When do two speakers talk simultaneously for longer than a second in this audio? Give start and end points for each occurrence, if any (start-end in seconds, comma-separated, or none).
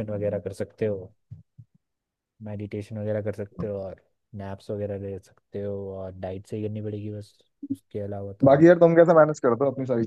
none